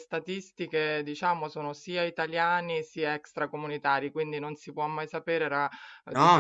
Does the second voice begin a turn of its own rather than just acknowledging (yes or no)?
no